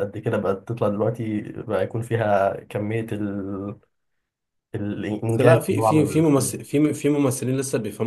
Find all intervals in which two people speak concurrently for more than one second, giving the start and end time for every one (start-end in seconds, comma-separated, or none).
5.2-6.5